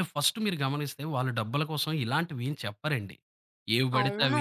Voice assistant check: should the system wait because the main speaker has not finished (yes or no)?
yes